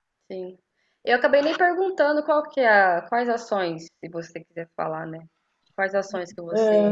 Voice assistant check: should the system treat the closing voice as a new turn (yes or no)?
yes